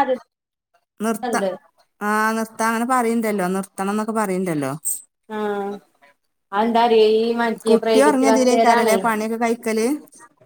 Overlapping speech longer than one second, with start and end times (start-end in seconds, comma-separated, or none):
7.7-9.0